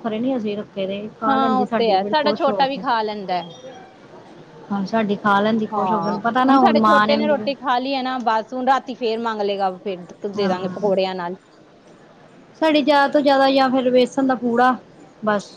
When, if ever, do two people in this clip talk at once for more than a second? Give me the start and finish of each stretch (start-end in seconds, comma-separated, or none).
1.3-2.8